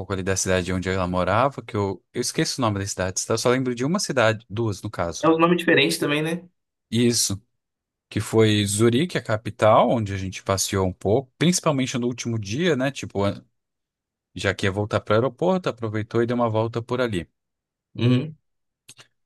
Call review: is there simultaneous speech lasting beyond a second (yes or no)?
no